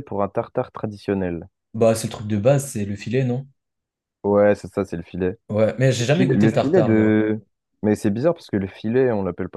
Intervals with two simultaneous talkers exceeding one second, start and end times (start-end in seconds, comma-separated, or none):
6.0-7.2